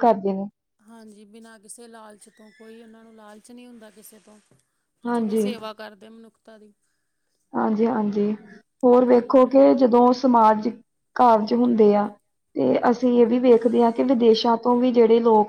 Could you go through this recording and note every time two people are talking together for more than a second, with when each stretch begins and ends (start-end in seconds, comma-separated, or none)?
none